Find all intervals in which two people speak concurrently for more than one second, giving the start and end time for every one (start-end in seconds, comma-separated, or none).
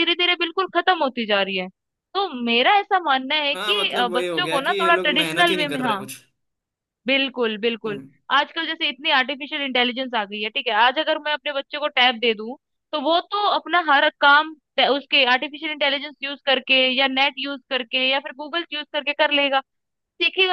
3.5-6.0